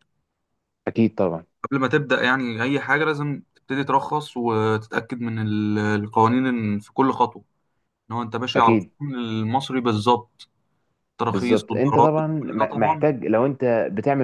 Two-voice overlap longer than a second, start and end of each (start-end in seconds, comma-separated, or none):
11.3-13.1